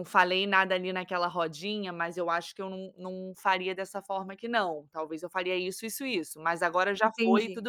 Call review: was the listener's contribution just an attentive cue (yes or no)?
yes